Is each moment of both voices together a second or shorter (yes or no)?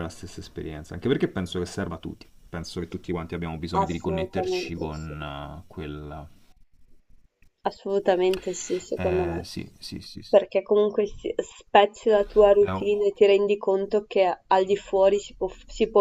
no